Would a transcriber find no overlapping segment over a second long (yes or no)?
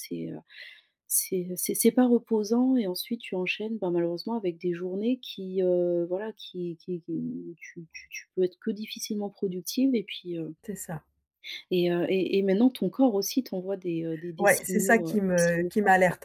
no